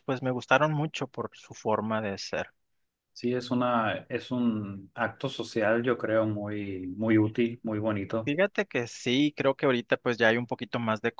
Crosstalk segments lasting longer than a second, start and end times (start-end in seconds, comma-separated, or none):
none